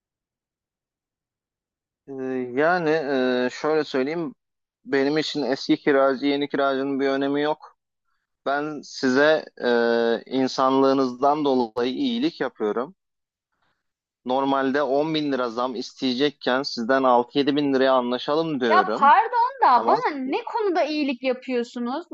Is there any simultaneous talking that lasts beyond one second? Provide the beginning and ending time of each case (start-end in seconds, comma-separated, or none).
none